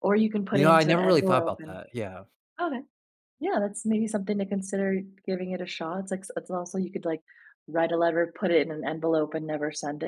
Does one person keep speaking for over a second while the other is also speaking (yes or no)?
yes